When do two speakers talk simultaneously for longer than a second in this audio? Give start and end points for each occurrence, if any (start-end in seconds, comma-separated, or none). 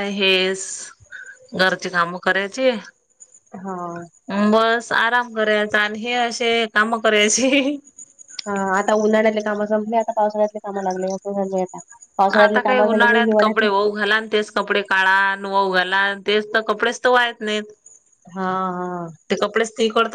12.4-13.7